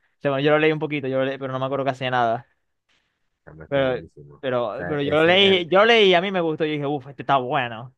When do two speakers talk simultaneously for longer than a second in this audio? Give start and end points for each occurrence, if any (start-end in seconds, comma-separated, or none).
3.7-5.9